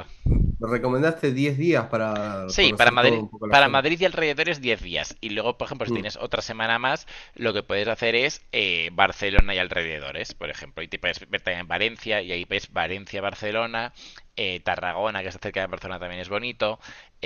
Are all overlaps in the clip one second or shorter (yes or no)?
no